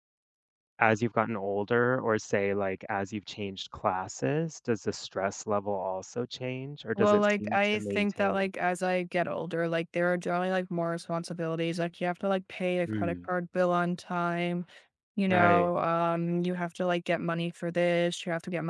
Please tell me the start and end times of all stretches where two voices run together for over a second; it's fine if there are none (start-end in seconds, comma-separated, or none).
7.0-8.5